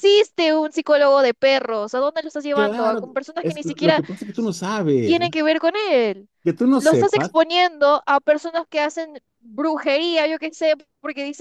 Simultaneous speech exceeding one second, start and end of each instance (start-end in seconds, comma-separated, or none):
2.5-4.0